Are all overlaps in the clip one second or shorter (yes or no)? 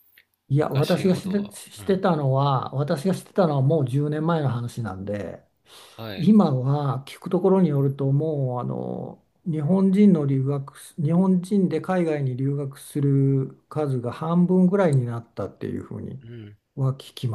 no